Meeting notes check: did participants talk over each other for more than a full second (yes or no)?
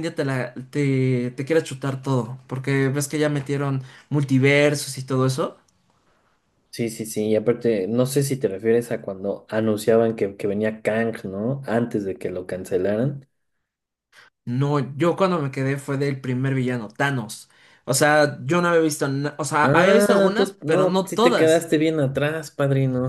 yes